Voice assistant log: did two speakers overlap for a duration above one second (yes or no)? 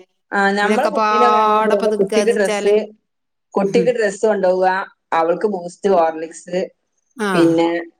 yes